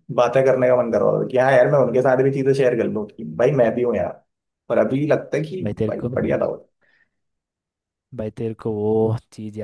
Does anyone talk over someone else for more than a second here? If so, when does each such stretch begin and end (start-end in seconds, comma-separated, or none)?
none